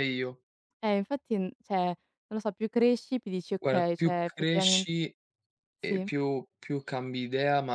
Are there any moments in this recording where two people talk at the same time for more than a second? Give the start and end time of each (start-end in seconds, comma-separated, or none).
3.6-4.8